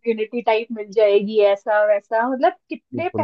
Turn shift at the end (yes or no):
no